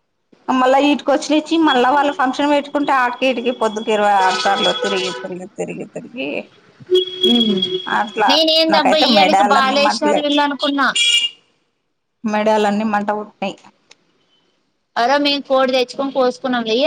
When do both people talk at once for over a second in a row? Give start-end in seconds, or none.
8.7-10.2